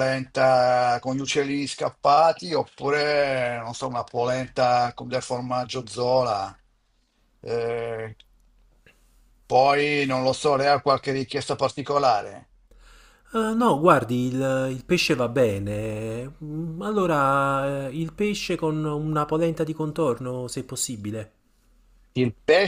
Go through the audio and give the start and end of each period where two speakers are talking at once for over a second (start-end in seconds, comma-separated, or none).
none